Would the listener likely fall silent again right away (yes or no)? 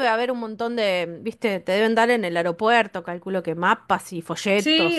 no